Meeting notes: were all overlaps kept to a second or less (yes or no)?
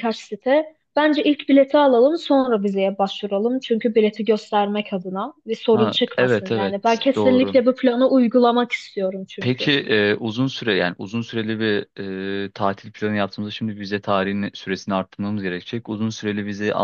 no